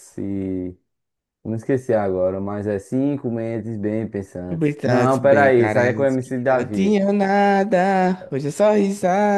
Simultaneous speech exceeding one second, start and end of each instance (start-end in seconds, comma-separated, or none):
4.5-7.0